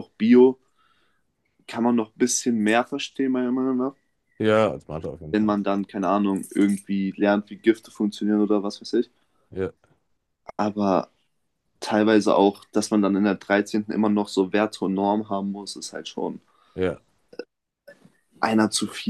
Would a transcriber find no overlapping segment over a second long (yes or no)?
yes